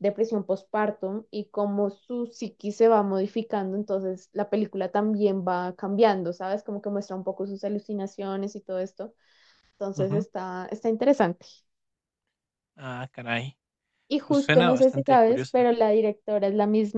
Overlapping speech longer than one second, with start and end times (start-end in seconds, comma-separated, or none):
14.2-15.7